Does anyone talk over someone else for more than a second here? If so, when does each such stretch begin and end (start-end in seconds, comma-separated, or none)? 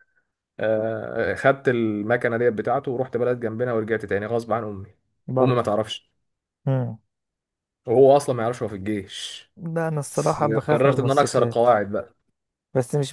10.1-11.7